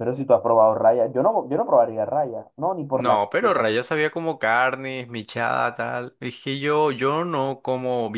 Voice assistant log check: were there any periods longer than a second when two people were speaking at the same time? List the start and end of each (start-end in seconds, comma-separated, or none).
none